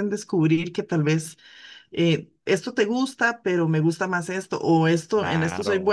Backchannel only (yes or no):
yes